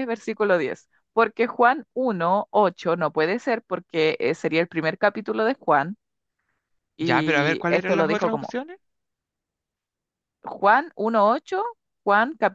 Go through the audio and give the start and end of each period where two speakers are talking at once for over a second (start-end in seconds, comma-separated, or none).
7.0-8.6